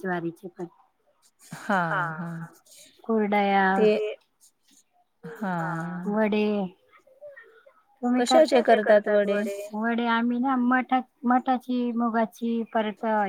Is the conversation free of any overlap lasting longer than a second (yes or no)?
yes